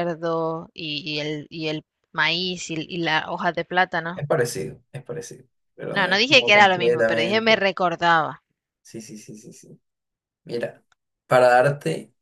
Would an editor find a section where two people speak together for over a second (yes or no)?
yes